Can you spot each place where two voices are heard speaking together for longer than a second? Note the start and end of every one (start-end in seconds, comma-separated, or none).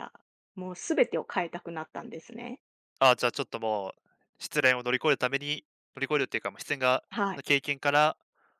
none